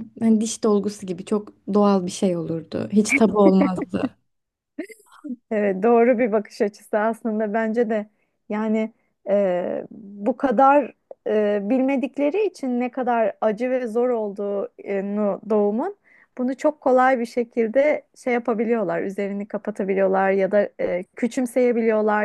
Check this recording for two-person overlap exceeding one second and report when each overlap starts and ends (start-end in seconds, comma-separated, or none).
none